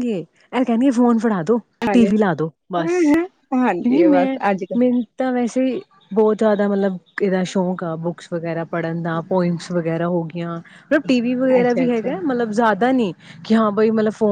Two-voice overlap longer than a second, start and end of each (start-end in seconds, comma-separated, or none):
none